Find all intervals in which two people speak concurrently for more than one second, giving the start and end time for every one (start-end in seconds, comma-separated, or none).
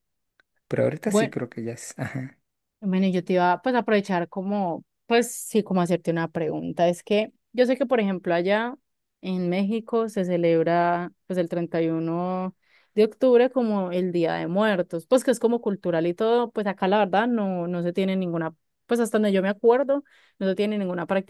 none